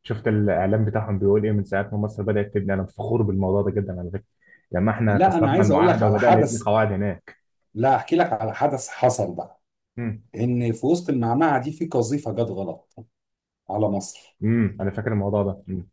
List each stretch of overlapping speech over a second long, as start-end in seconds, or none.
5.0-6.7